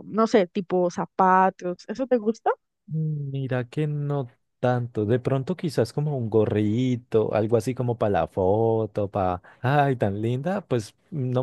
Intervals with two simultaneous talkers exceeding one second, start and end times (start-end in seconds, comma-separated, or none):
none